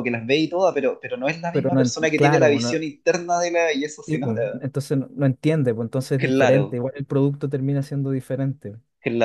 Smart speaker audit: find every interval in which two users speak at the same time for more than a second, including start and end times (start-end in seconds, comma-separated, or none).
1.5-2.9